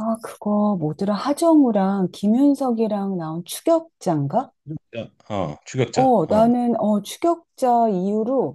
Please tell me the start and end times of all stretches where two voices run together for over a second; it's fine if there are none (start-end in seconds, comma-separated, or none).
none